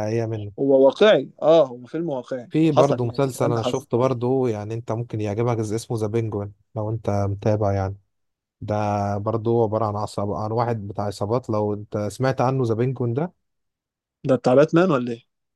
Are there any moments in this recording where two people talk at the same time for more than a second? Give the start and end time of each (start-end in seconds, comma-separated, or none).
2.5-3.9